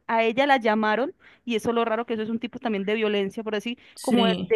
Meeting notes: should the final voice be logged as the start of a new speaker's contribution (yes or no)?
no